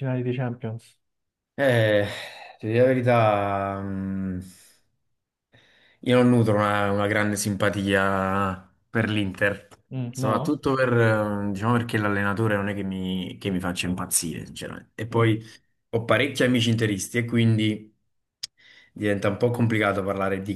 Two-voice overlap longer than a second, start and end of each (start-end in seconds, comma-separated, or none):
none